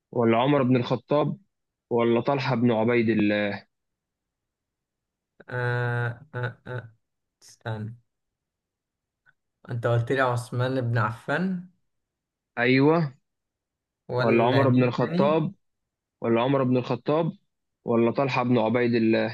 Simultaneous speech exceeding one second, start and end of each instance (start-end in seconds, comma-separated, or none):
14.2-15.4